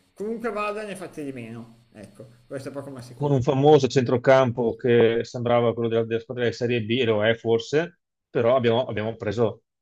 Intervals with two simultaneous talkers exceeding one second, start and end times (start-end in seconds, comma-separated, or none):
none